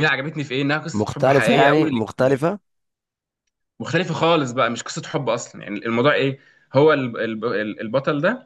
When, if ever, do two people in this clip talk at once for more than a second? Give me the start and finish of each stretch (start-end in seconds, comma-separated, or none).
0.9-2.5